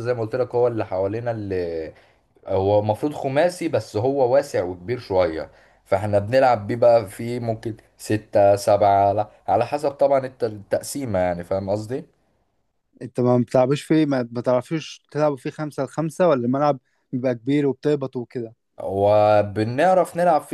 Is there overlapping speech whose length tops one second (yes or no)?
no